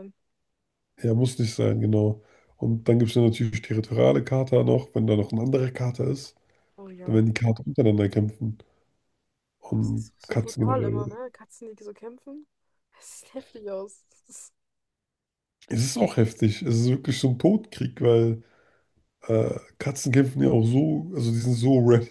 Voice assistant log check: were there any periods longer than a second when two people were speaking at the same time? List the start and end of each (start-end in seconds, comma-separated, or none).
9.8-11.2